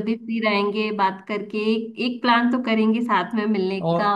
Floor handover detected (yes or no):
no